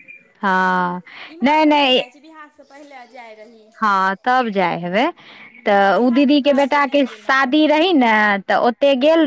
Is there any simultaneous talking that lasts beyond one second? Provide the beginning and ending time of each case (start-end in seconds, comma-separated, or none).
5.7-7.5